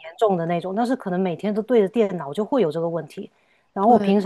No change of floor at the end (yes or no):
yes